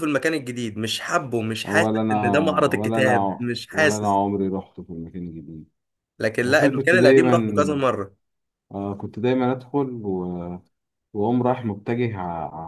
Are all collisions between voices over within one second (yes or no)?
no